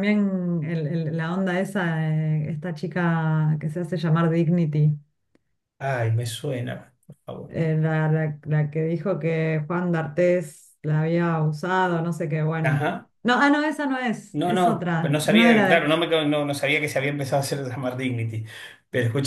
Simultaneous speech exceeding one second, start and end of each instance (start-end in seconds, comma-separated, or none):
14.3-15.9